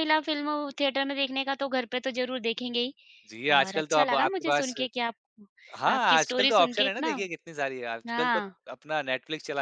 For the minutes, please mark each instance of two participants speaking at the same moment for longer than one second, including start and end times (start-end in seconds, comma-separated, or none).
3.5-4.7, 6.0-7.2